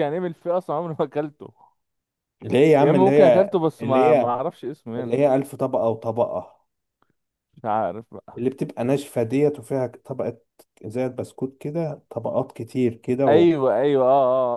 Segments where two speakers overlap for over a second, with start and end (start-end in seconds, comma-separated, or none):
2.8-4.3